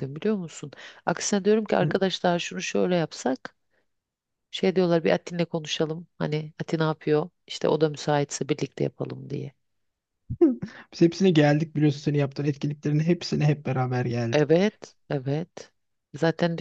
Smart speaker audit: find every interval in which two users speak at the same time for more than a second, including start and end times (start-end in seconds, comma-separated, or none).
none